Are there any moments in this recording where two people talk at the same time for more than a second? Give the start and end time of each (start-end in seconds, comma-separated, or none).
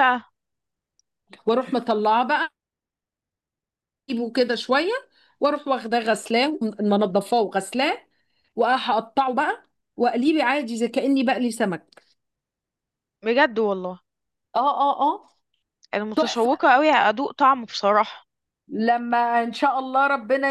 none